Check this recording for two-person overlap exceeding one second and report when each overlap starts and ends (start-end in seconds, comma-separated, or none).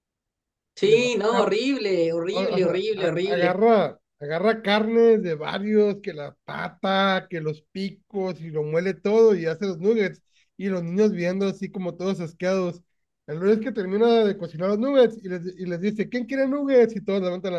2.3-3.6